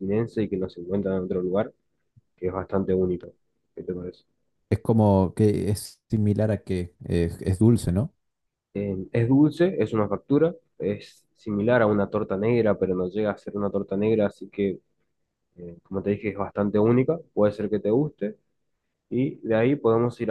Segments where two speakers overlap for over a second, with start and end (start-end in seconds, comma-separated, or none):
none